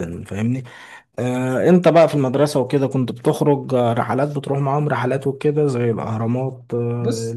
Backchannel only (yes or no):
yes